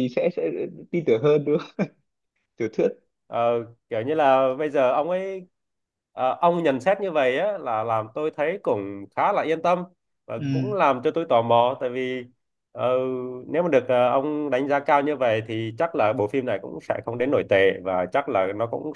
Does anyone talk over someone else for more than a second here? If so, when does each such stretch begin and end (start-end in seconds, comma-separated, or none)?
none